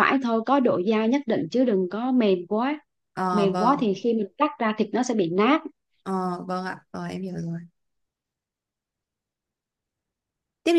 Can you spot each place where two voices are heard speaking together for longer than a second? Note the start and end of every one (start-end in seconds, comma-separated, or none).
none